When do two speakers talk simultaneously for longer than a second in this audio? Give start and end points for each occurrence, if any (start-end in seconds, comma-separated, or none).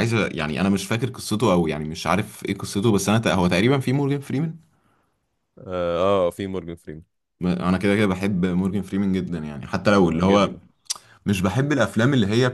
none